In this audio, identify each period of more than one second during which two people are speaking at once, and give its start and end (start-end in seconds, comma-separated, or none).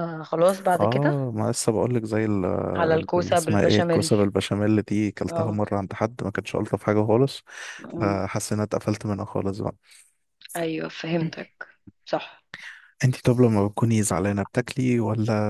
2.8-4.1